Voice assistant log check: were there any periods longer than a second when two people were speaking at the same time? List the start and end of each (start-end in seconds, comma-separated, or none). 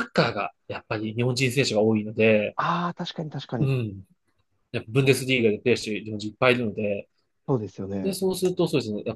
none